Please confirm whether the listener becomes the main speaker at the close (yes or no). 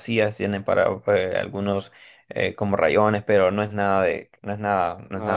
yes